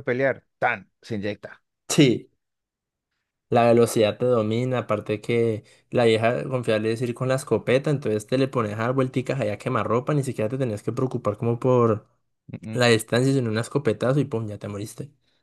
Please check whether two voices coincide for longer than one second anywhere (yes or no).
no